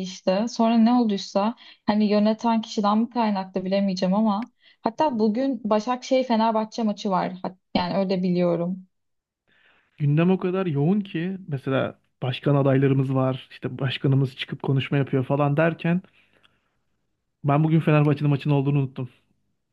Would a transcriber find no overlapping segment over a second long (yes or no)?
yes